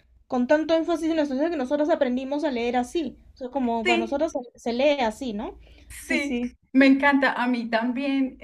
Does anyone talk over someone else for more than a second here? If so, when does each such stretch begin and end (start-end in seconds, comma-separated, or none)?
none